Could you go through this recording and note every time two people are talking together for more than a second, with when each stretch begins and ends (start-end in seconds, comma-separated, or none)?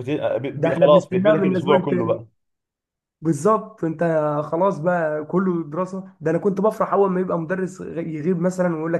0.6-2.2